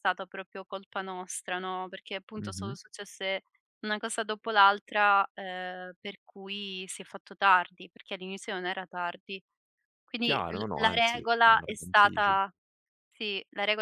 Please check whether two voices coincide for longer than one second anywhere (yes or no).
yes